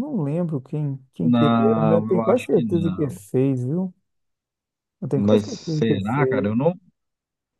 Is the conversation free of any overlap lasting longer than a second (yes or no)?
no